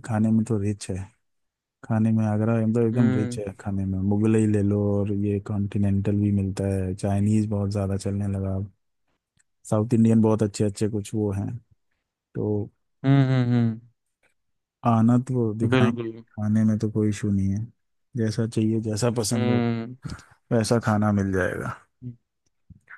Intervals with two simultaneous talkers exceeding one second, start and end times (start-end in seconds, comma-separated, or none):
none